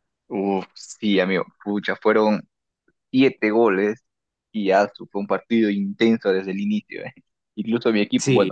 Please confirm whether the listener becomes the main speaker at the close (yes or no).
no